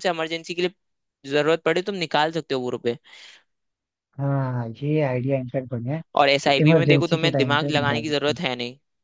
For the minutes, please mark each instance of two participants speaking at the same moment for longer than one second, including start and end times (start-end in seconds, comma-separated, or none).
6.4-8.4